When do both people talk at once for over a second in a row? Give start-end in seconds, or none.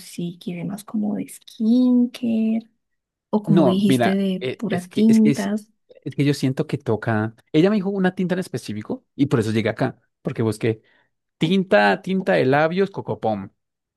3.5-5.5